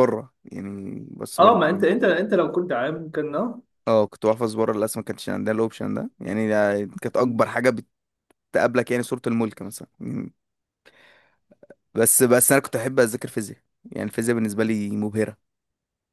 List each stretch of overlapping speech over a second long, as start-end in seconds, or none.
none